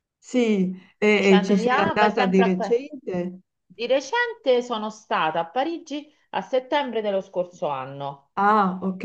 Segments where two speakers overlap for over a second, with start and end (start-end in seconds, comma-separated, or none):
1.1-2.8